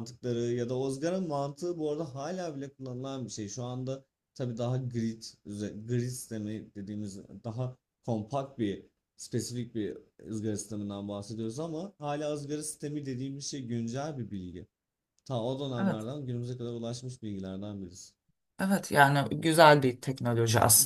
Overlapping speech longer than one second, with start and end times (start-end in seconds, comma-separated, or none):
none